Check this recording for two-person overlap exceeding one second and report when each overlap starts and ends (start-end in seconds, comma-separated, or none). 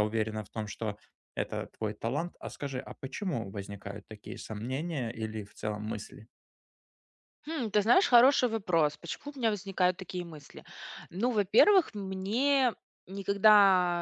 none